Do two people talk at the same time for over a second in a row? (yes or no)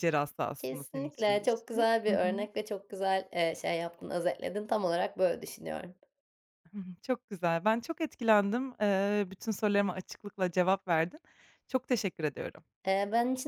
yes